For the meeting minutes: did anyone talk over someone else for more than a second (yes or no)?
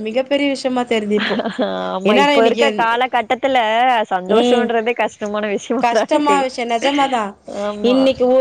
no